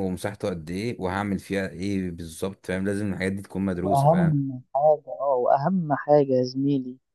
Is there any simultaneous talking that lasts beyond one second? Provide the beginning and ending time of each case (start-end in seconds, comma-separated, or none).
none